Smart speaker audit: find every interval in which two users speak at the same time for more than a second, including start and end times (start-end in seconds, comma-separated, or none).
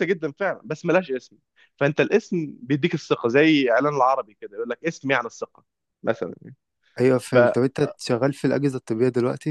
none